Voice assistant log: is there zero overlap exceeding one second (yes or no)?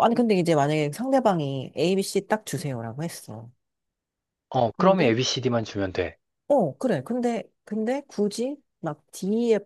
yes